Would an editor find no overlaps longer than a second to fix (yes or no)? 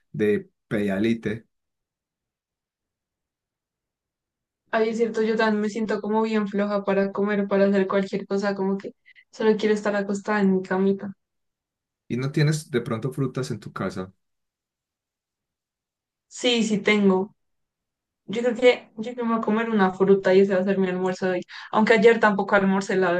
yes